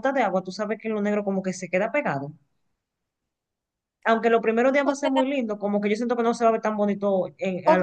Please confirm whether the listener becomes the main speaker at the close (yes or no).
yes